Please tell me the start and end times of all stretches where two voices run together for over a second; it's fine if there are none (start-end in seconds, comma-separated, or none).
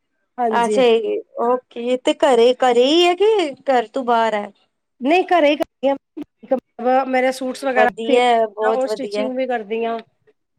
7.8-9.3